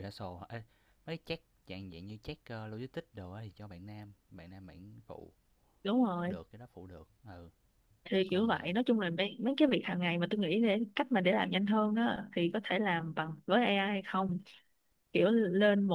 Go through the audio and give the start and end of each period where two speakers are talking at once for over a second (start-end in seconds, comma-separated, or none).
none